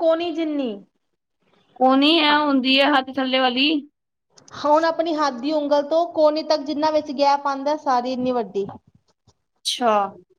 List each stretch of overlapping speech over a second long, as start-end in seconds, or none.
none